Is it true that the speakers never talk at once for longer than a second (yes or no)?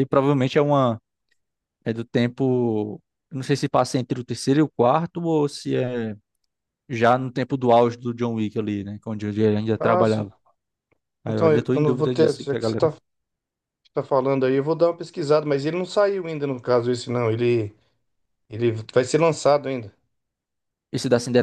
no